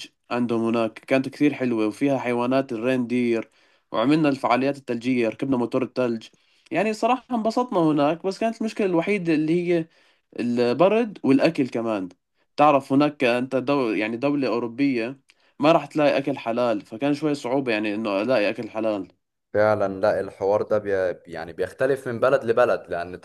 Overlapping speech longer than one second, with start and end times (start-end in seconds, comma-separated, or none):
none